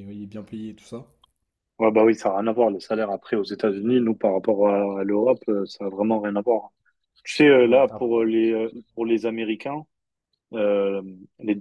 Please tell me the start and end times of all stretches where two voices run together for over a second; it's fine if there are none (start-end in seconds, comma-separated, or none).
none